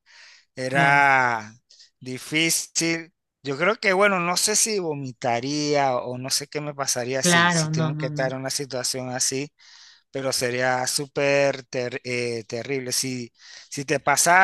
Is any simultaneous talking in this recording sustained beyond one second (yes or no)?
yes